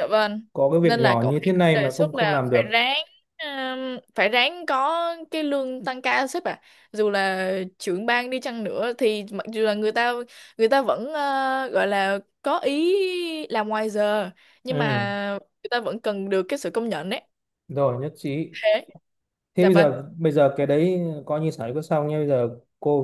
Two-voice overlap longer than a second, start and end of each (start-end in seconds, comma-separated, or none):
0.8-2.8